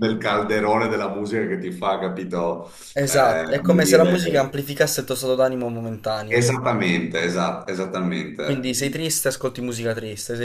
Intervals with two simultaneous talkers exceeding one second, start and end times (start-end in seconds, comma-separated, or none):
3.1-4.5